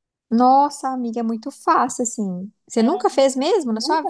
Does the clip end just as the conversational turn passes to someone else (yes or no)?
yes